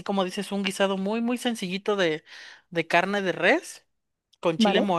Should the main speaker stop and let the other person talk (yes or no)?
no